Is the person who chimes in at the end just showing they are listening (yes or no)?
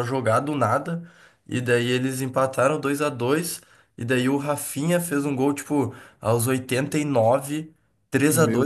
yes